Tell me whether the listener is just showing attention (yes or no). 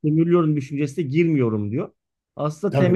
no